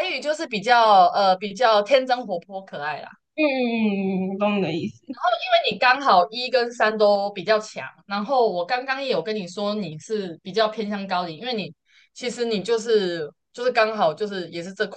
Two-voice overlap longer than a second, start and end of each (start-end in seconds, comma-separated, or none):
none